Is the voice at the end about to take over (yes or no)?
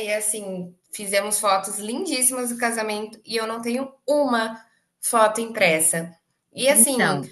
no